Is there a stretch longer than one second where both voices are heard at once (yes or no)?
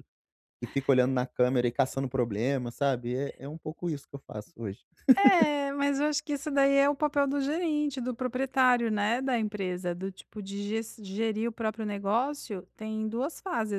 no